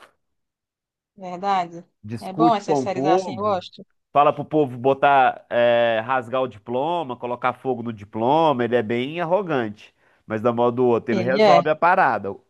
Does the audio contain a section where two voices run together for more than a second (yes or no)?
yes